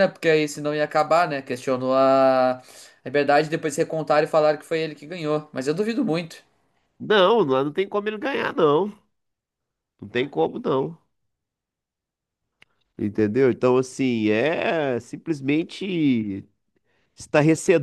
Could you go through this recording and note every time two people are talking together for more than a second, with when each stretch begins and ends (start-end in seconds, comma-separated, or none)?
none